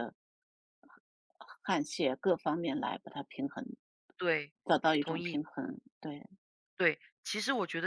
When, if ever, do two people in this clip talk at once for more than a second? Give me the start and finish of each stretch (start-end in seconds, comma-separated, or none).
none